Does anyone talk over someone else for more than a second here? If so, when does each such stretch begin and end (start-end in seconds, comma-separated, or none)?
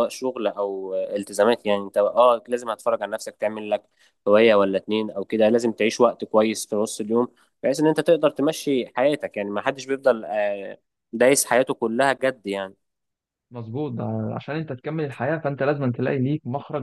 none